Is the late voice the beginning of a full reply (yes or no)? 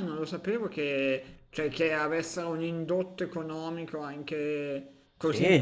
yes